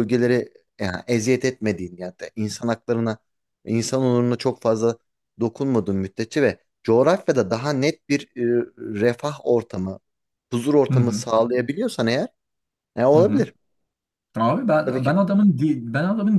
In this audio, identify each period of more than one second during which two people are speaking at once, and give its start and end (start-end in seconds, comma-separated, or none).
none